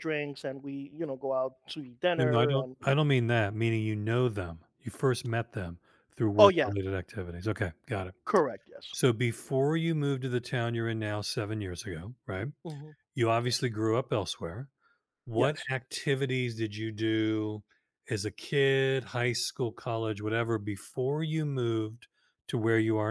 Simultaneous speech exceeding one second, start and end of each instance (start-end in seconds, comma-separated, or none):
none